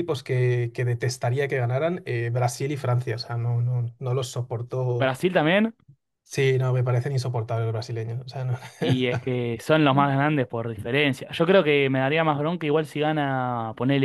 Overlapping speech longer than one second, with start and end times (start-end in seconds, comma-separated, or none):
none